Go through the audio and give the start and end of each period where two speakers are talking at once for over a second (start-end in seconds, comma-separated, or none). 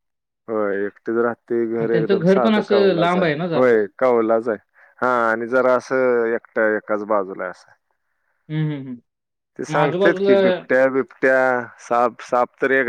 1.8-3.7